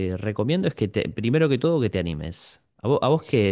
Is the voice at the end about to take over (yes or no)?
no